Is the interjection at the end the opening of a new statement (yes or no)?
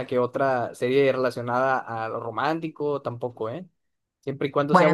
yes